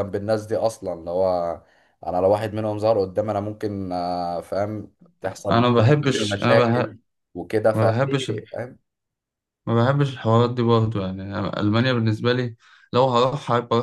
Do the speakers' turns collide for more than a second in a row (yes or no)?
yes